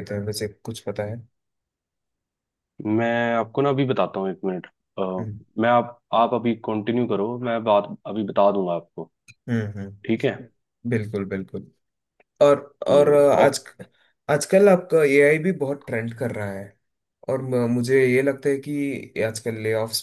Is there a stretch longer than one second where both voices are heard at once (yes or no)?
no